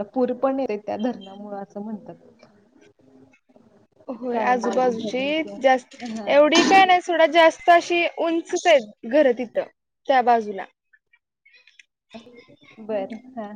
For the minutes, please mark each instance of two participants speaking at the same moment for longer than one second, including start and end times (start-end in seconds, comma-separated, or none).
4.3-6.0